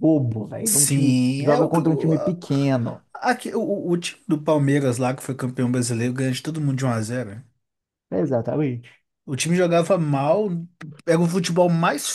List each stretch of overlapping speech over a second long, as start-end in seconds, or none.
0.6-2.4